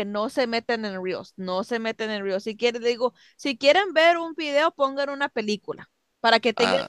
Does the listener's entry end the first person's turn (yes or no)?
no